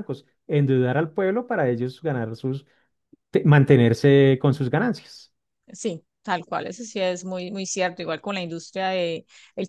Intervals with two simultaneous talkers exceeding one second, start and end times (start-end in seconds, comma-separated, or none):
none